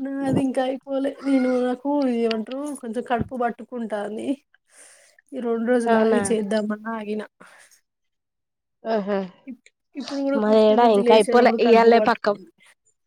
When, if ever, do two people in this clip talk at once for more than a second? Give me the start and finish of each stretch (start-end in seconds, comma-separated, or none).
10.4-12.3